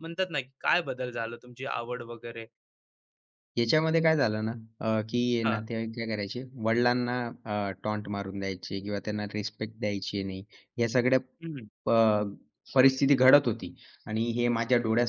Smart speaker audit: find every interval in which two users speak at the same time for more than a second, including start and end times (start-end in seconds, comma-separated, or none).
none